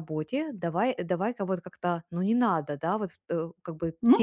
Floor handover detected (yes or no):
no